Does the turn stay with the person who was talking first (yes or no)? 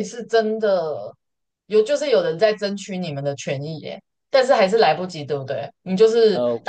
yes